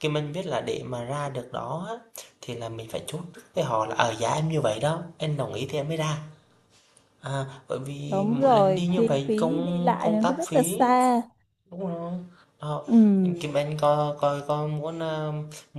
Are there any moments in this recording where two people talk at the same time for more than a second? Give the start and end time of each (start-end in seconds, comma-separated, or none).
8.0-10.8